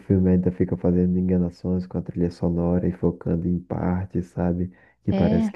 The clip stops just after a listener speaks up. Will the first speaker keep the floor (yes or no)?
yes